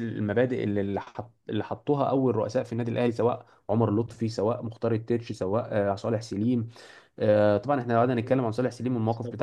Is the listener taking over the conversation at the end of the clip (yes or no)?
no